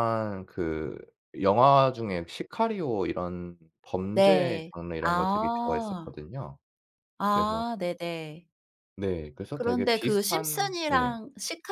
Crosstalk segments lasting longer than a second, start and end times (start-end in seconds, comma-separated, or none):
4.1-6.1, 9.5-11.2